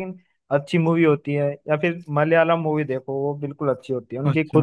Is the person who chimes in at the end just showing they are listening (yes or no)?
no